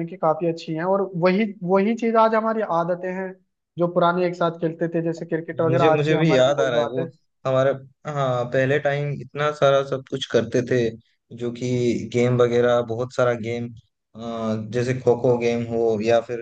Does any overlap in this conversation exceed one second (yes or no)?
yes